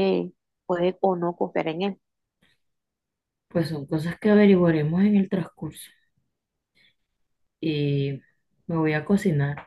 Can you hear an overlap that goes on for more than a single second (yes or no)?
no